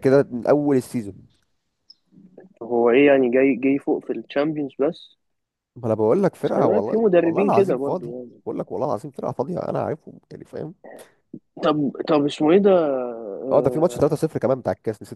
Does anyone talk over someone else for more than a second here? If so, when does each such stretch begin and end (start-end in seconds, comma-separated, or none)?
6.4-8.4